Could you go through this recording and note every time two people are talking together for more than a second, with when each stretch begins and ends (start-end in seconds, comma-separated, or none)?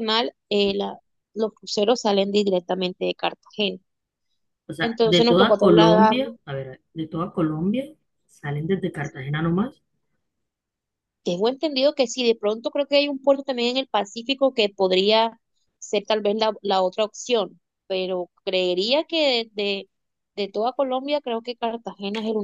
4.8-6.2